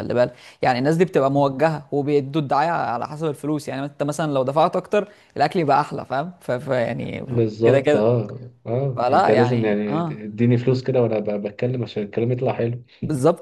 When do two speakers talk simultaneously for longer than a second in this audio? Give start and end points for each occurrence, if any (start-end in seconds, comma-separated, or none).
8.9-10.2